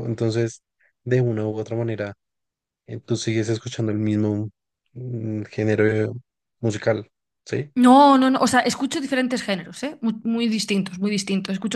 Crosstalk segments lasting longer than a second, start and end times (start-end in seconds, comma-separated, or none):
none